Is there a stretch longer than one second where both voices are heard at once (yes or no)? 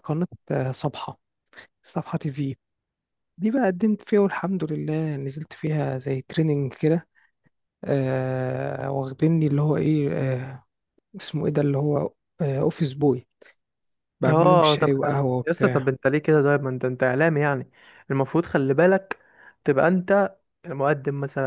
yes